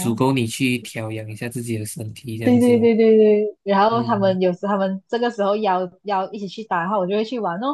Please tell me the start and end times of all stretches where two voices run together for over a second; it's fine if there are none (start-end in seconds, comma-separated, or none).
none